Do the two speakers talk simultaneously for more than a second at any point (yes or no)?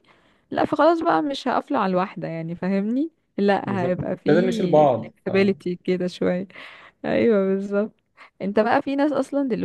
yes